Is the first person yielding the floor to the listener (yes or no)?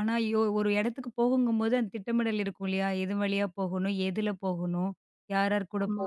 no